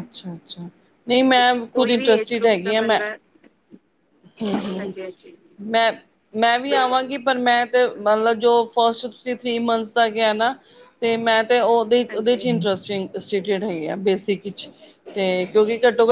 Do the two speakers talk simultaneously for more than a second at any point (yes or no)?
yes